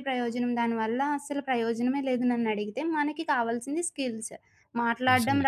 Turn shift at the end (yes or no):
no